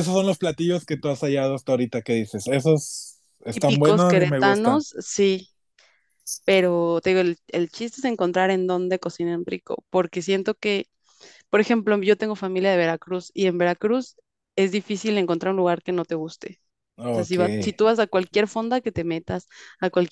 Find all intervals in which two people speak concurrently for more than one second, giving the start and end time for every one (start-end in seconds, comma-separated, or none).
3.5-4.8